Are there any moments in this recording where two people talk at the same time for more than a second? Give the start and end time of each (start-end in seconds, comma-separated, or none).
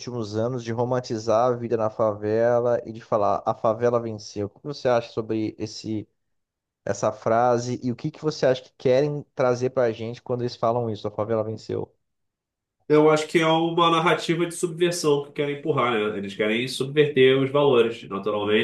none